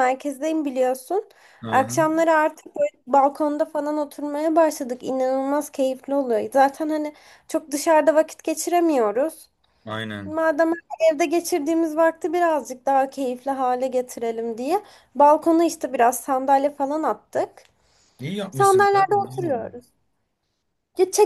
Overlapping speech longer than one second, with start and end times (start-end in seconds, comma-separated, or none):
18.5-19.7